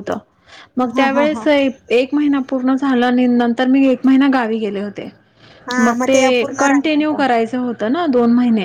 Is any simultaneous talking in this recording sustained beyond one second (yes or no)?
no